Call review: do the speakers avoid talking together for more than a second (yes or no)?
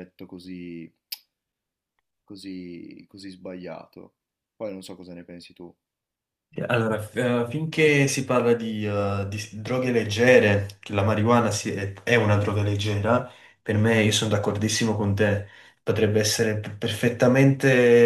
yes